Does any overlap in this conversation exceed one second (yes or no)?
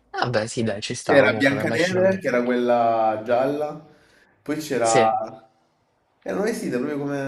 yes